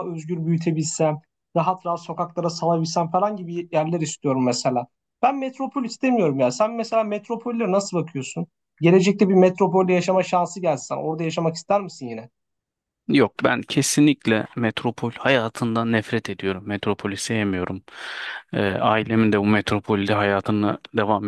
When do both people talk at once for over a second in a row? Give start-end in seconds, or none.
none